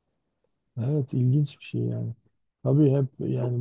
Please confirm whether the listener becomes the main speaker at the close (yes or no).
no